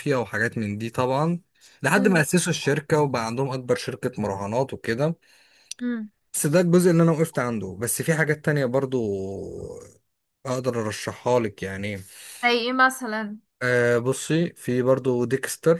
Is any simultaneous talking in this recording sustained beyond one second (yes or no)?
no